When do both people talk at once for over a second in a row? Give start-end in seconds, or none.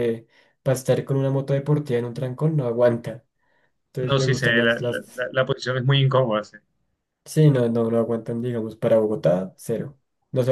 4.0-5.2